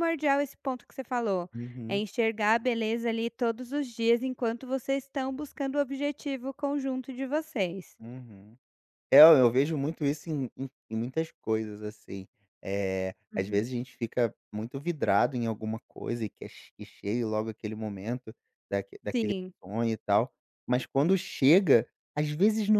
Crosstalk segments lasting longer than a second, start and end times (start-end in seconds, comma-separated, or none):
none